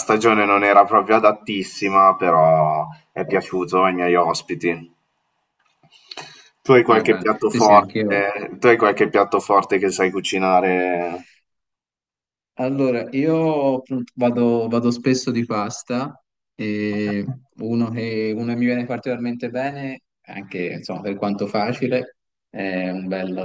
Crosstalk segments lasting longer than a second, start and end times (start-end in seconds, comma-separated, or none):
6.9-8.2